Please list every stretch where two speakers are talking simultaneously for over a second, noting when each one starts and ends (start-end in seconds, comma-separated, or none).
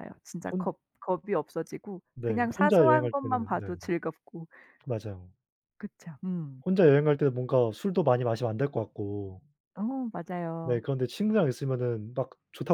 2.1-3.7